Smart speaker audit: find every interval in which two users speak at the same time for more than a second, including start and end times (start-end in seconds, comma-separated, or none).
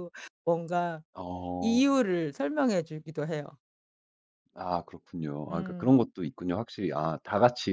none